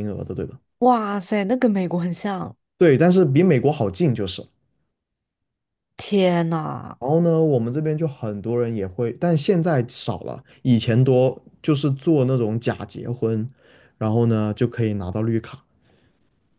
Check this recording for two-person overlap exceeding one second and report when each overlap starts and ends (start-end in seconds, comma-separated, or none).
none